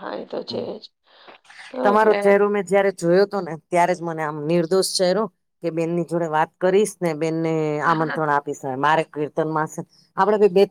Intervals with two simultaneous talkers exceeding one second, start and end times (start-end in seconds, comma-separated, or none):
none